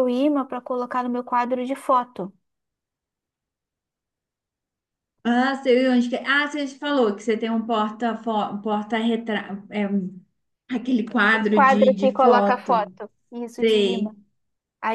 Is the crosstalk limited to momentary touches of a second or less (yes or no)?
no